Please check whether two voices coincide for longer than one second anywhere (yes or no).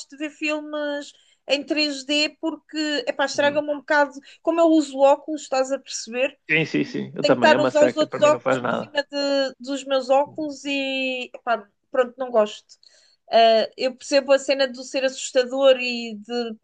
yes